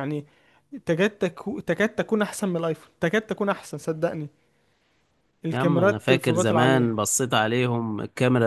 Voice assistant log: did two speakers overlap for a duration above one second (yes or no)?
yes